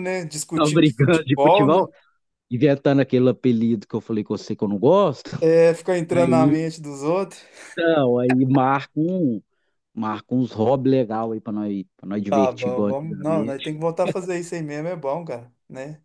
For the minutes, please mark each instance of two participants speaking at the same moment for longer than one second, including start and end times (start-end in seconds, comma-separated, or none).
0.6-1.8, 12.3-13.6